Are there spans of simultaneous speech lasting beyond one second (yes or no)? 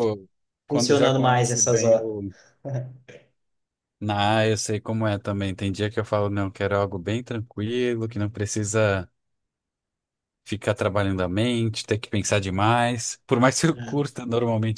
yes